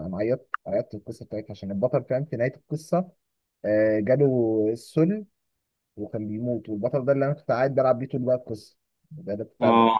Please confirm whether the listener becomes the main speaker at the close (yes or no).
no